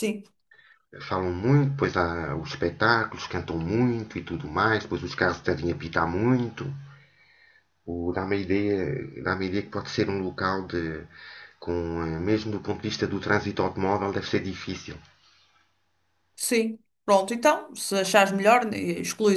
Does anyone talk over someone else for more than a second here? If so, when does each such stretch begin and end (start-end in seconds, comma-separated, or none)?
none